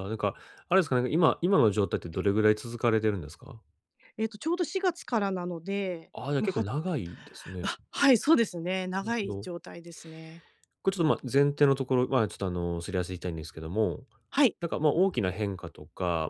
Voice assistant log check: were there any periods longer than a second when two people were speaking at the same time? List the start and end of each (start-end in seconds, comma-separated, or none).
none